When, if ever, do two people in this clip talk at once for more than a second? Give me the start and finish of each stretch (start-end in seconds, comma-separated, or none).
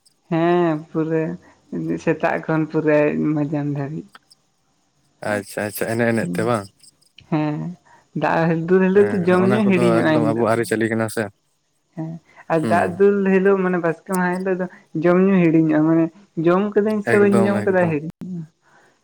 none